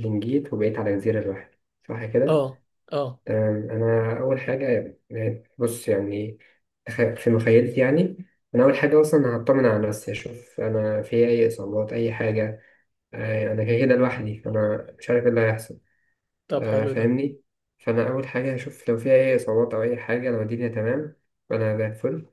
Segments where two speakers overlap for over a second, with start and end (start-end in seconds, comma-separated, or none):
none